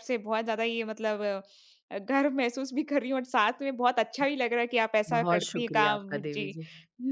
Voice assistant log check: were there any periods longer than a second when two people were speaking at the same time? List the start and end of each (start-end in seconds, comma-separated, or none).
5.1-6.6